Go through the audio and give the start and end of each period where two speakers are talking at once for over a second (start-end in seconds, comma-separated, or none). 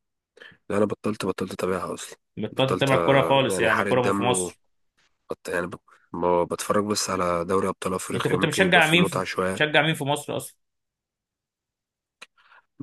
2.4-4.5, 8.1-9.6